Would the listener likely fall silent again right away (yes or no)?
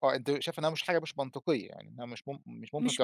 no